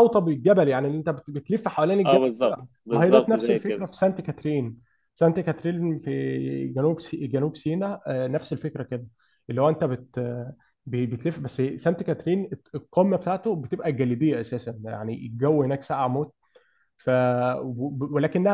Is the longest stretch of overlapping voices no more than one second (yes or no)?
no